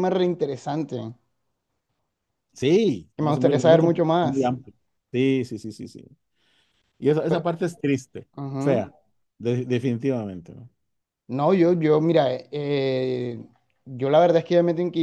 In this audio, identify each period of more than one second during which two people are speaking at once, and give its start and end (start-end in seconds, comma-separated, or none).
3.1-4.5